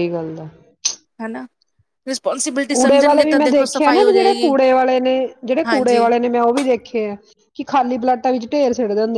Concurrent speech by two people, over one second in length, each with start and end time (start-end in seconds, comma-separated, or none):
2.7-4.5